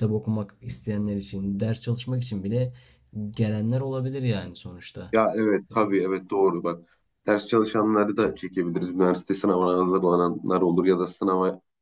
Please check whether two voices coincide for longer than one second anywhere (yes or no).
no